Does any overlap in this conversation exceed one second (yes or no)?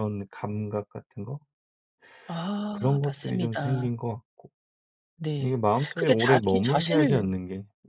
yes